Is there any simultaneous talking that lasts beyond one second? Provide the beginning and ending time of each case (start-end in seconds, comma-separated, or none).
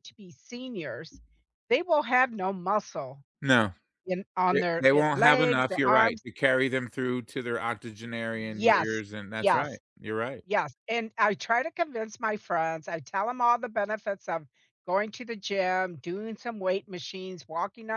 4.5-6.2, 8.5-9.8